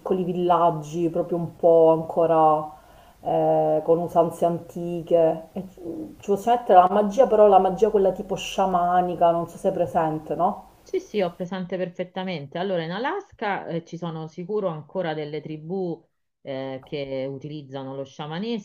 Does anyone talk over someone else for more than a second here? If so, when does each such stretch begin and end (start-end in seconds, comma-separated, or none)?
none